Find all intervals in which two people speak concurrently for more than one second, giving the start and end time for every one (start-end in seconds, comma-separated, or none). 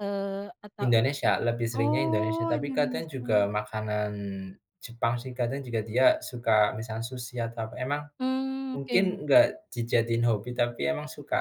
1.8-3.3